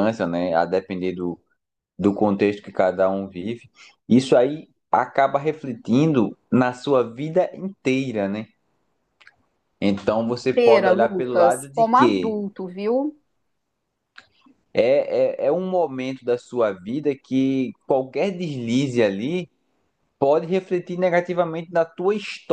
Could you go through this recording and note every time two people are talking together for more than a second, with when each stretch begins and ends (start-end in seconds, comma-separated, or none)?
10.6-12.3